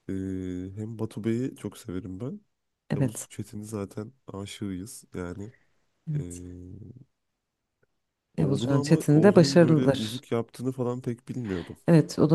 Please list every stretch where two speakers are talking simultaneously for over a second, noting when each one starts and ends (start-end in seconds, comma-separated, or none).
8.4-10.2